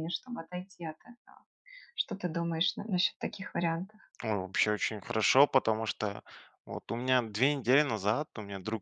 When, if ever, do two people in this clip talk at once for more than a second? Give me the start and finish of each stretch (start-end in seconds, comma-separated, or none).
none